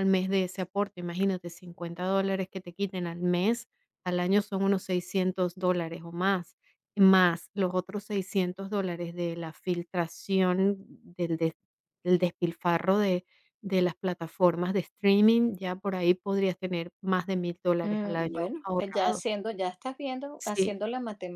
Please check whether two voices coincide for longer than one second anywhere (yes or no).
yes